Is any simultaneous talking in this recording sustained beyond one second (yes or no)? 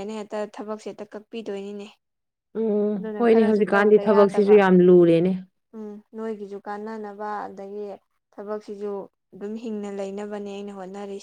yes